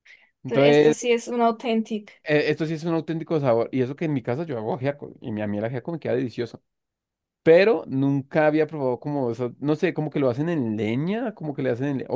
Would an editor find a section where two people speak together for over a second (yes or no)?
no